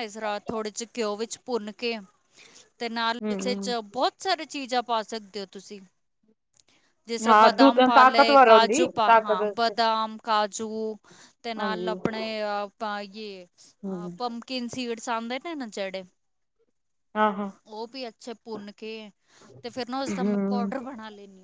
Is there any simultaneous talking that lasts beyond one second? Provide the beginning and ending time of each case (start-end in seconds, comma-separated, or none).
7.3-9.4